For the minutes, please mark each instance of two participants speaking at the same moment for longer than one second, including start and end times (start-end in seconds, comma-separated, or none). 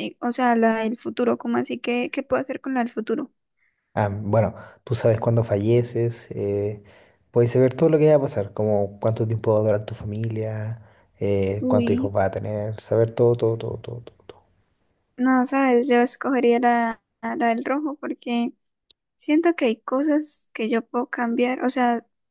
none